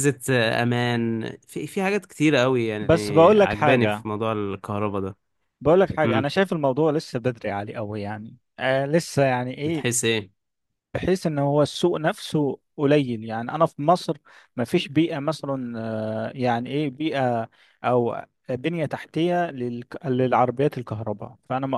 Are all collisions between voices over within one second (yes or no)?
no